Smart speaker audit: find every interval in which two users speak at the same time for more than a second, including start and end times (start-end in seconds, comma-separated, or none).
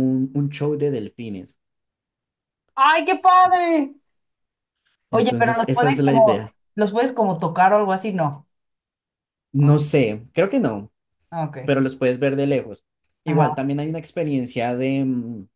5.1-6.5